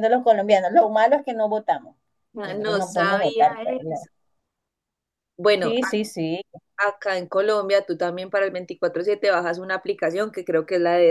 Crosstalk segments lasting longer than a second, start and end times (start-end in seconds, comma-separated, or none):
2.4-4.1